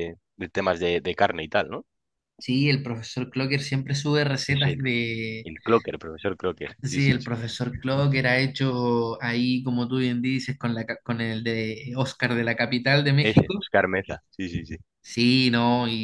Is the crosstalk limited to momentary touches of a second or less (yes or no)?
yes